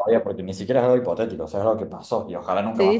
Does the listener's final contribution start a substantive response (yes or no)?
yes